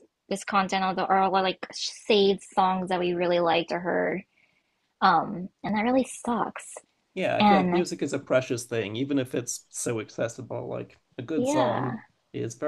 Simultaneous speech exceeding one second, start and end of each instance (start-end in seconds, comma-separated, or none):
none